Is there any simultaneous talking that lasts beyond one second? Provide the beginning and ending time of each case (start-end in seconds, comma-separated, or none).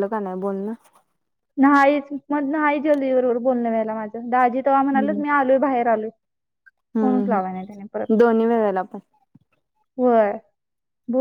none